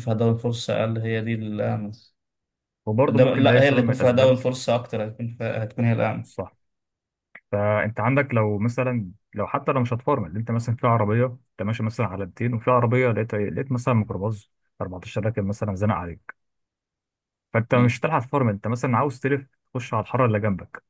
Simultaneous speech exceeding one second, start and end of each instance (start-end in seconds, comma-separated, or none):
3.1-4.3